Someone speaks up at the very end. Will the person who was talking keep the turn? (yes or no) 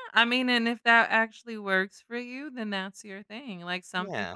yes